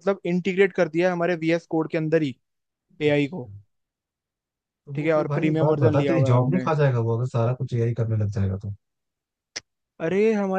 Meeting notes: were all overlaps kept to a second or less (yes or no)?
no